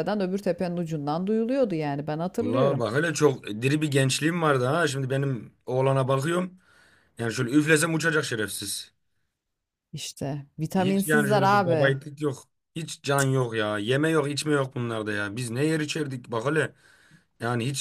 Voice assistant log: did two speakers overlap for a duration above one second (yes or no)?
yes